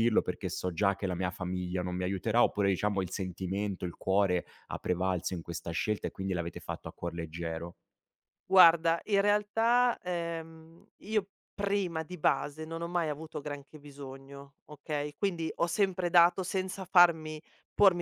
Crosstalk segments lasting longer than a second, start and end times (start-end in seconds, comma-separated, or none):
none